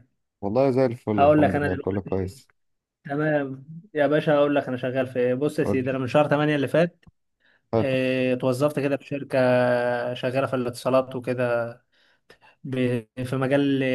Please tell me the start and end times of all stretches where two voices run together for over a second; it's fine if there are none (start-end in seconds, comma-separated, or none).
1.1-2.4